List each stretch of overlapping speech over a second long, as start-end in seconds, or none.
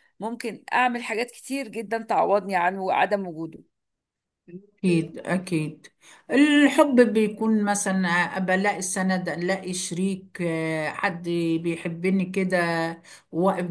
none